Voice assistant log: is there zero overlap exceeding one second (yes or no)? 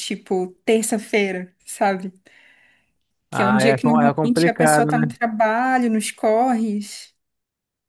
no